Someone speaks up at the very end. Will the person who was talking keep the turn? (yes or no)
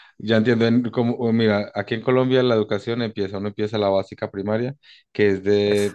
yes